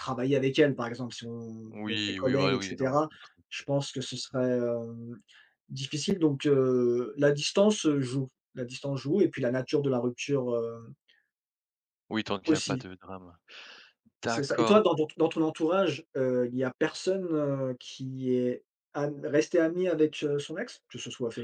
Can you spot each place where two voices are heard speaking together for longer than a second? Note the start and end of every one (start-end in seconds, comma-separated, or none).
1.7-3.0